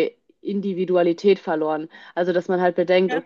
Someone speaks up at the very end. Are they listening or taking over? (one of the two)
listening